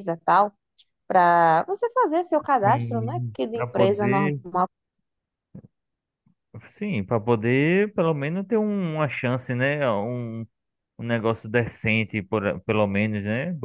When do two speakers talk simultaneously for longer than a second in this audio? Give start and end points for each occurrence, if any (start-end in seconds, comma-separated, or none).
2.6-4.4